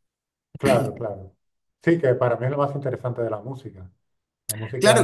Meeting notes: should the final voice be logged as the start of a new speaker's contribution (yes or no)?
yes